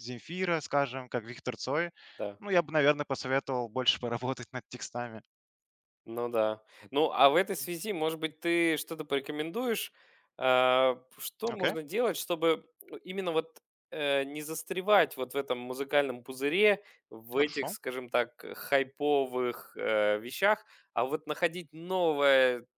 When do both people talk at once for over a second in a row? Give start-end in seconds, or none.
none